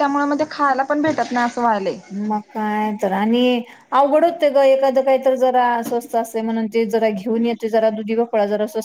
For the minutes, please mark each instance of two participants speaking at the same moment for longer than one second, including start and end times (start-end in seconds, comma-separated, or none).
none